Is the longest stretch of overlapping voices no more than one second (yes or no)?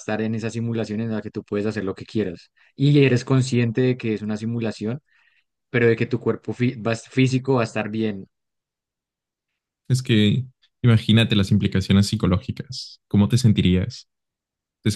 yes